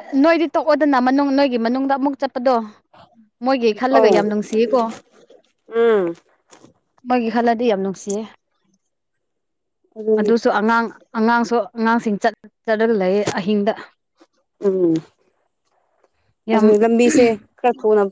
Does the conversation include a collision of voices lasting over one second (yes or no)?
no